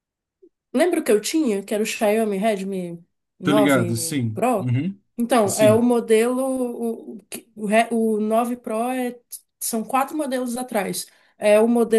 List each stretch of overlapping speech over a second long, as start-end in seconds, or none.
3.4-4.7